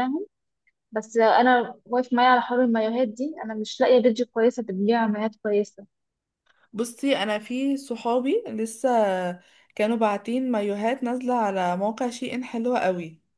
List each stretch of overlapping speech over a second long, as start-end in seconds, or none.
none